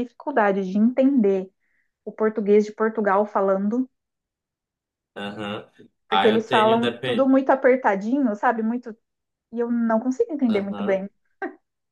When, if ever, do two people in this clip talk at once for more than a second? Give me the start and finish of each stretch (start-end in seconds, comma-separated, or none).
6.1-7.3